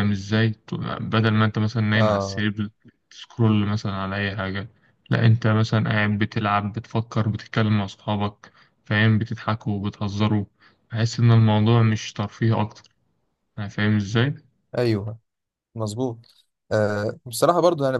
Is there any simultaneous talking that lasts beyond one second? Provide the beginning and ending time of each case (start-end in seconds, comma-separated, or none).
none